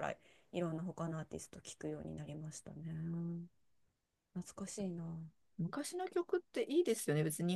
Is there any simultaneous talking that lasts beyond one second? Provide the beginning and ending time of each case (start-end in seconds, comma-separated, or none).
none